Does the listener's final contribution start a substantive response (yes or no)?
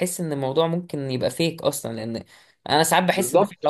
no